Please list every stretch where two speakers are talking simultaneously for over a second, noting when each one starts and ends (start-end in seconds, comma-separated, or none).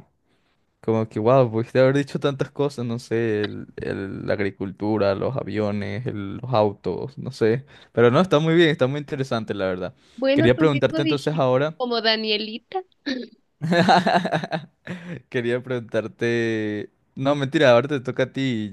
10.3-11.8